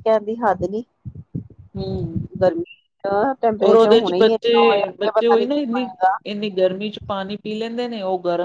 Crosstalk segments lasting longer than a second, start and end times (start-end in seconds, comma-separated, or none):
3.7-5.8